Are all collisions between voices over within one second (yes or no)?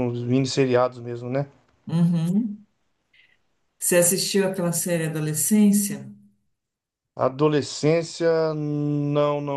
yes